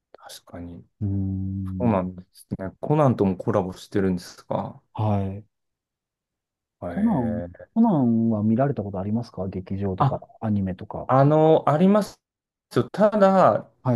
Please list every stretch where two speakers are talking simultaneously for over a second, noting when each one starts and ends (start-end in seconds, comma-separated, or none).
none